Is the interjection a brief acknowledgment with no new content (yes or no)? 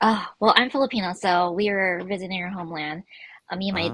yes